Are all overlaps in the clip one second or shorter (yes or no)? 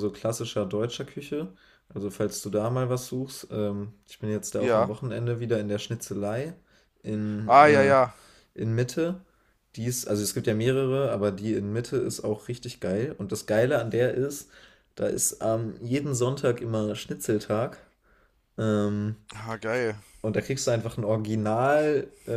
yes